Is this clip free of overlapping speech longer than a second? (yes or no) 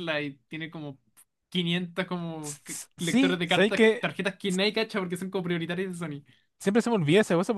no